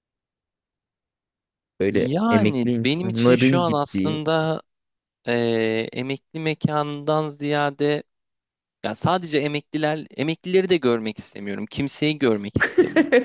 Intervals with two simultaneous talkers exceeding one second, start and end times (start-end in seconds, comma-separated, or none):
1.9-4.2